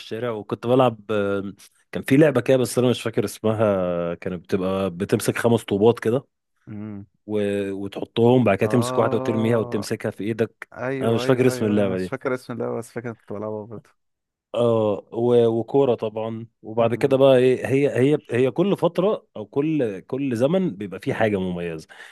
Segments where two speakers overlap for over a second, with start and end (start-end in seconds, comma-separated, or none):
8.6-9.9, 10.7-12.2